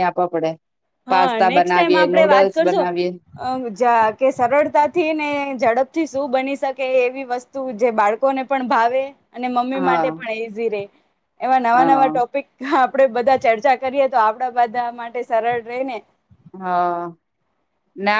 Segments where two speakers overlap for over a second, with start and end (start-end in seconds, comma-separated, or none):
1.1-2.8